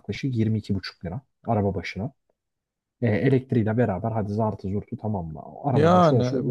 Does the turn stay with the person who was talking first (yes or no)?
no